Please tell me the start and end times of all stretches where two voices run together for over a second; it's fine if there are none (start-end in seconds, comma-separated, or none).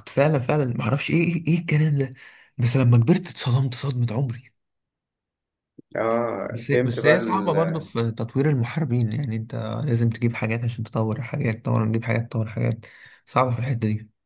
6.5-7.9